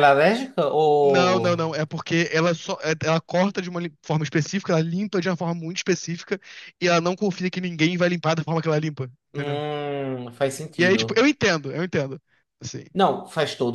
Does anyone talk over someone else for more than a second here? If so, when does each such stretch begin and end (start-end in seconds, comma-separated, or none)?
none